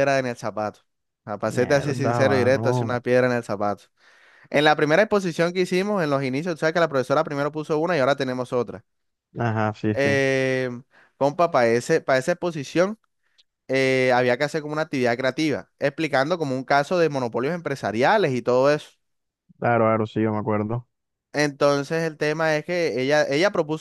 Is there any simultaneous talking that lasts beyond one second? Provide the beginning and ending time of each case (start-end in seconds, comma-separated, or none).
1.4-3.0